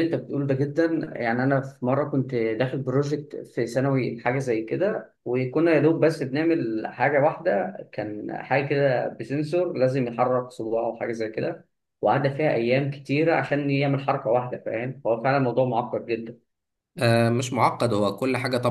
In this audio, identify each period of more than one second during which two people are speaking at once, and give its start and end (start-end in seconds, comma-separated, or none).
none